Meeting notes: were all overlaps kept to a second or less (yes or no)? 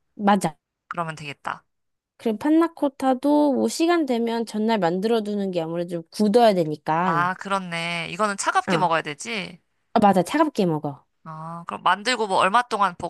yes